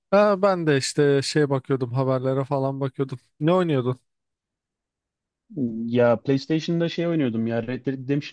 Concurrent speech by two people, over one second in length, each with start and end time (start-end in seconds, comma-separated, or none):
none